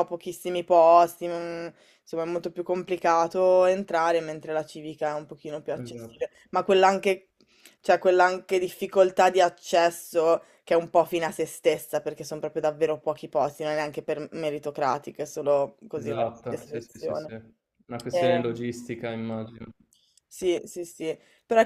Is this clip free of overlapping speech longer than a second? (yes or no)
no